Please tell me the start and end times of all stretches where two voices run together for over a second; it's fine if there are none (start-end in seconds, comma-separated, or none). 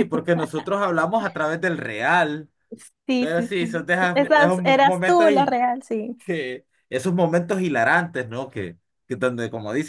3.2-5.3